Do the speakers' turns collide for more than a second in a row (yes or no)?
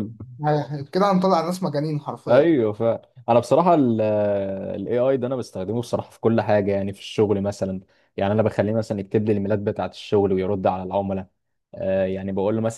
no